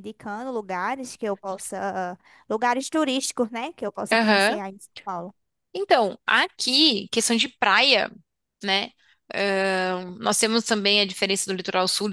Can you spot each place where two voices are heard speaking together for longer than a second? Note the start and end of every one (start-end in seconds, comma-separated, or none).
none